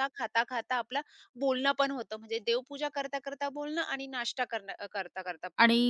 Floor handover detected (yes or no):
yes